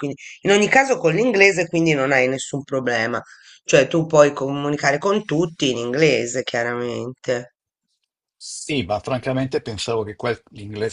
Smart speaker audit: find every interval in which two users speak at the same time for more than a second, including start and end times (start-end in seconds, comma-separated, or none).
none